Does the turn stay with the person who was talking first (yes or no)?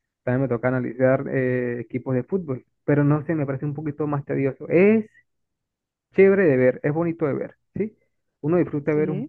yes